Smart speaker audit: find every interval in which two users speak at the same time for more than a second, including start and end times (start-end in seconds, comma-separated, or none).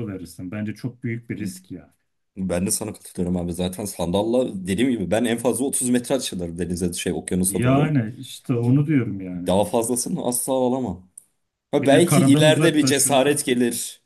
11.8-13.5